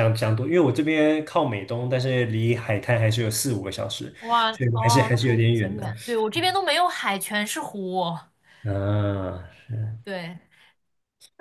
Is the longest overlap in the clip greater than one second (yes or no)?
yes